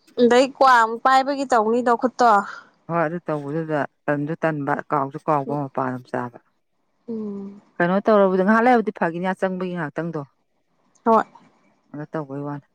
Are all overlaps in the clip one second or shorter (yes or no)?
yes